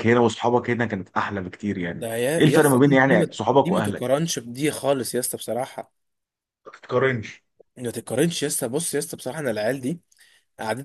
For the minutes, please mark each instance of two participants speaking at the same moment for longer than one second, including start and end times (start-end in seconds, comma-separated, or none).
1.9-4.2